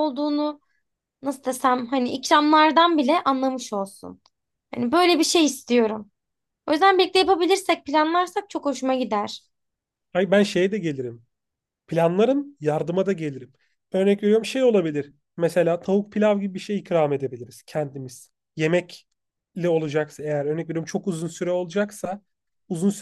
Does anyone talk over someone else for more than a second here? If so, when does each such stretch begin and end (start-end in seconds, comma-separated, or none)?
none